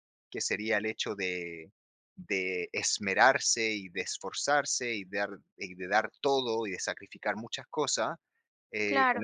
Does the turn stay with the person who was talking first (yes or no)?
yes